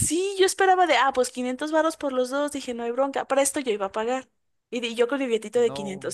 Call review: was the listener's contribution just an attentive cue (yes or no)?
yes